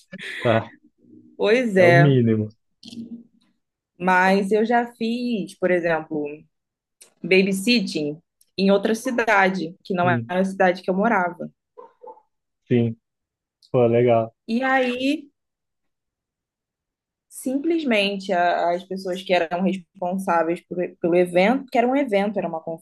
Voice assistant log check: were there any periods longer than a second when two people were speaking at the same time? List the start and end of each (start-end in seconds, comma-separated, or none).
none